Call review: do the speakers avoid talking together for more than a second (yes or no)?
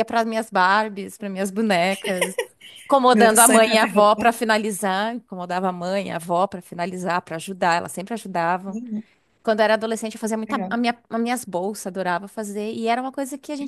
no